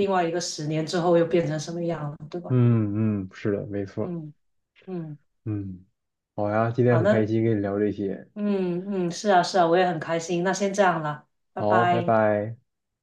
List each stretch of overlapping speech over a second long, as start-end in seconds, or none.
none